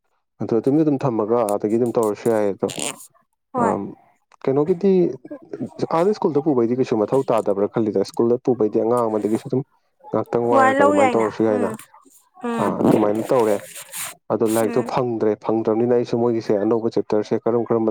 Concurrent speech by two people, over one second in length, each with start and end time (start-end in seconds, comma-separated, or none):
10.3-11.7